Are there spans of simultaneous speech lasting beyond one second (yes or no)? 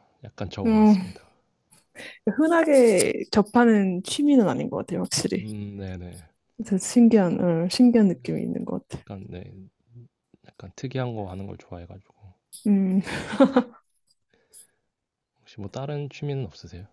no